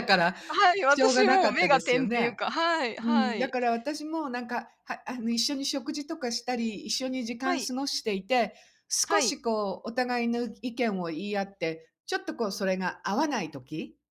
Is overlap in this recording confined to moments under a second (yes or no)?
no